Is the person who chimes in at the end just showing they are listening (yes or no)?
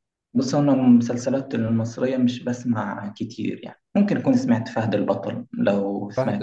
no